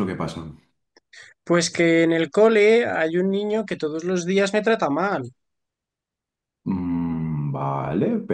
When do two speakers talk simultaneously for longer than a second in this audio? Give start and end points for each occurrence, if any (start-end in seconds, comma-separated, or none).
none